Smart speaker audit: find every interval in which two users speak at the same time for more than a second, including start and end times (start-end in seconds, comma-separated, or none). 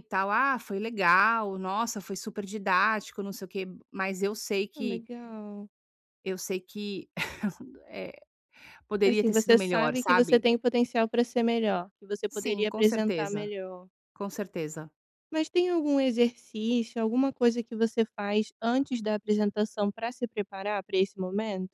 9.1-10.5, 12.3-13.5